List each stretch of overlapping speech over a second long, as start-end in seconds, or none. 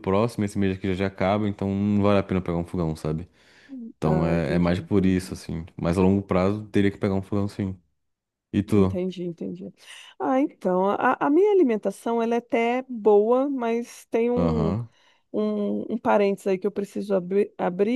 4.0-5.4